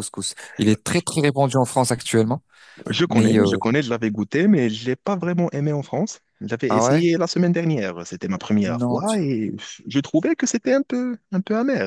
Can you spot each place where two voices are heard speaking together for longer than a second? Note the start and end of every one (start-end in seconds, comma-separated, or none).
none